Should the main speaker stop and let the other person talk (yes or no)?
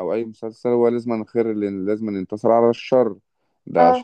no